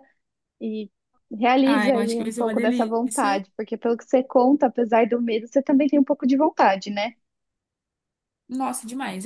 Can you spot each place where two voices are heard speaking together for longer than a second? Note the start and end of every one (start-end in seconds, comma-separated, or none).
1.6-3.4